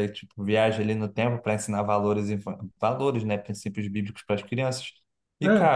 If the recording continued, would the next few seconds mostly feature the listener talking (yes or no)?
no